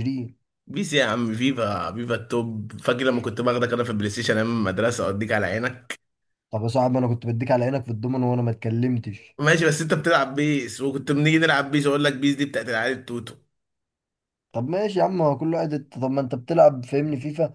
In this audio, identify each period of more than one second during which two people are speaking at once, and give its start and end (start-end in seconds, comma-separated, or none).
none